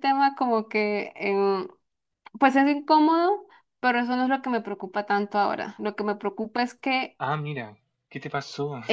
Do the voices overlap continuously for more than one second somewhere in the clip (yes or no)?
no